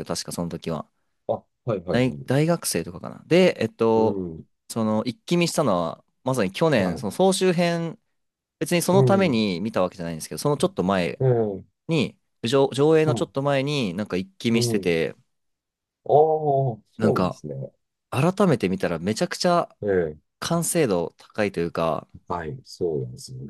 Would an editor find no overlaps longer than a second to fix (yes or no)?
yes